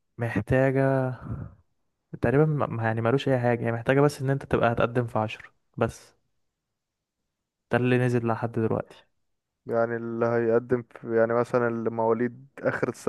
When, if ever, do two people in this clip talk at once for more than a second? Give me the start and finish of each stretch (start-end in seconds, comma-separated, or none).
none